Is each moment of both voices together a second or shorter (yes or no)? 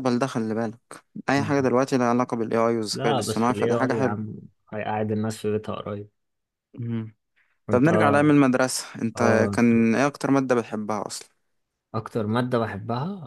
no